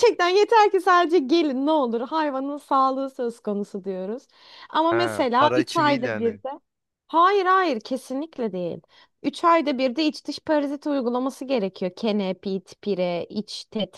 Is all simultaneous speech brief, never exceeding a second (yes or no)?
no